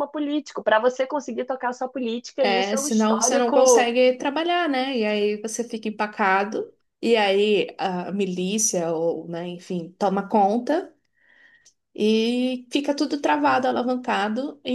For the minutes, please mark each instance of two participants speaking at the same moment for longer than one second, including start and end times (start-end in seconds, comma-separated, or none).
2.4-3.9